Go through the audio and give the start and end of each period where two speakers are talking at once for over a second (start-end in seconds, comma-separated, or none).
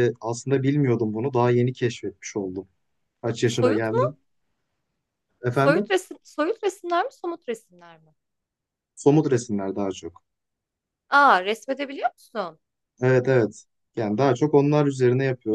none